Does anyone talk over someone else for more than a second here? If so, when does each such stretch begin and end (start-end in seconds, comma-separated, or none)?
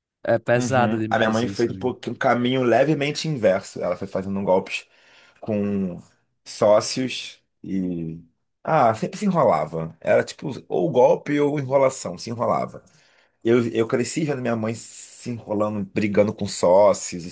0.5-1.9